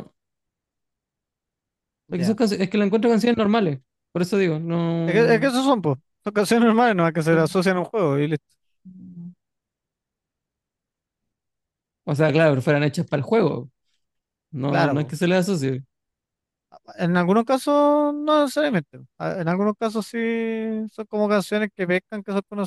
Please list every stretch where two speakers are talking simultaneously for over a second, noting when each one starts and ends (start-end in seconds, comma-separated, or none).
none